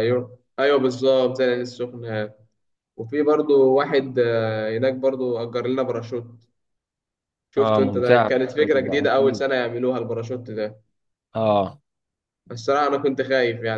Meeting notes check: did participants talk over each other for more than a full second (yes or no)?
yes